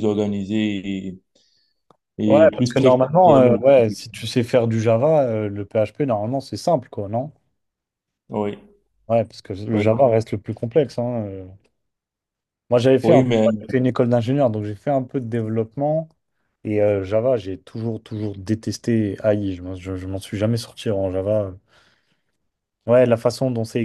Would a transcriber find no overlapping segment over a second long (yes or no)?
no